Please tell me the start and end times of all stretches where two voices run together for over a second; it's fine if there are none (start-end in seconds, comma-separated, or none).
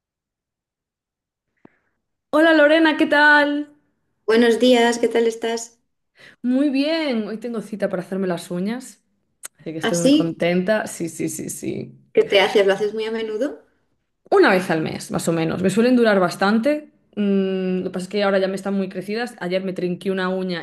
none